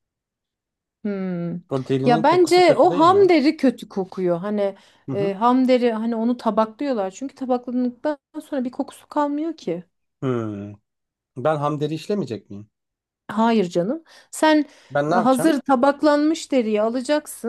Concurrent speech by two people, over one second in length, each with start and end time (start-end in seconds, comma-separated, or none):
2.0-3.3